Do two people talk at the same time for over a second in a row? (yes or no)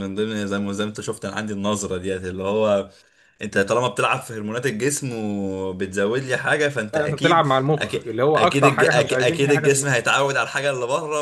yes